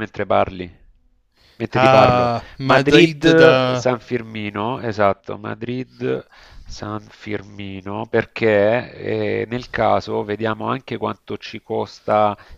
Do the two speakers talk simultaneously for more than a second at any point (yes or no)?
yes